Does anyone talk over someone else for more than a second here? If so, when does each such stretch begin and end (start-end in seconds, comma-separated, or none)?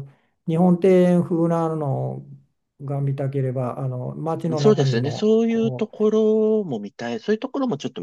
4.6-6.0